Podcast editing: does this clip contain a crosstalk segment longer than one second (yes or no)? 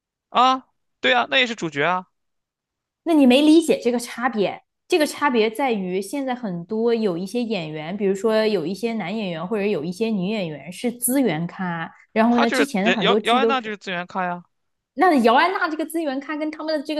yes